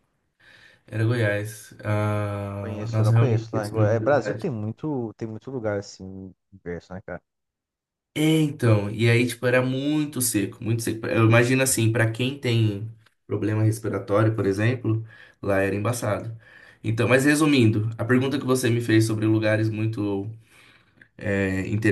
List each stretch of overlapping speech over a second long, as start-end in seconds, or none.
2.6-4.6